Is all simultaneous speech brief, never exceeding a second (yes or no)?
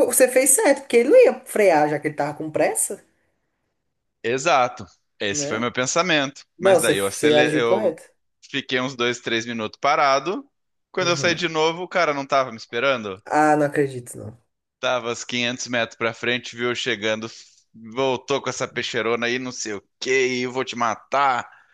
no